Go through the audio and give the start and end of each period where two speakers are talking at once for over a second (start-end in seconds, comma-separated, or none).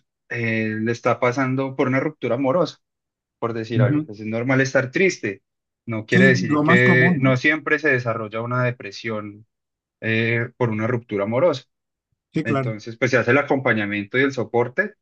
6.1-7.4